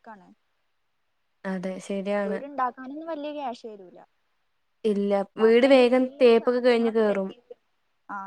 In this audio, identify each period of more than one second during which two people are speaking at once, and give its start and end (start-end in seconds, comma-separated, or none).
5.4-7.3